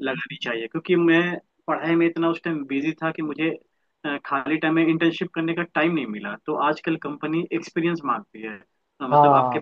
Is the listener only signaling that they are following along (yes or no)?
yes